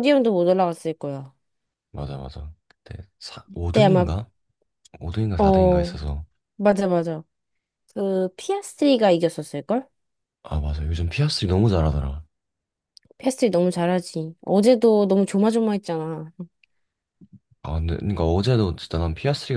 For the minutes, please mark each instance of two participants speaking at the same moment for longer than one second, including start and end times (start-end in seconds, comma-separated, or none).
none